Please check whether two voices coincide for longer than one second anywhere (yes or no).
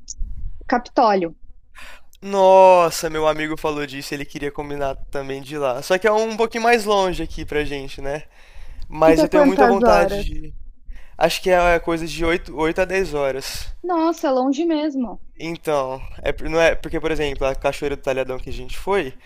yes